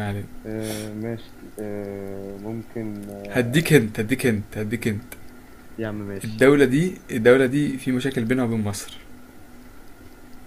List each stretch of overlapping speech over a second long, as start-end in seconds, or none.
none